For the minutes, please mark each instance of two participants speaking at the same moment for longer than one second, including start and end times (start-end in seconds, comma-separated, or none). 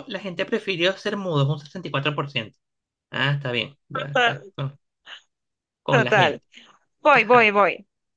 none